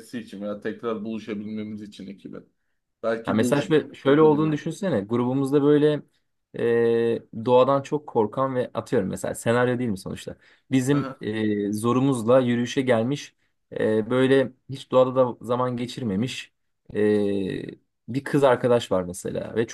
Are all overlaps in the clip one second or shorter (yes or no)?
no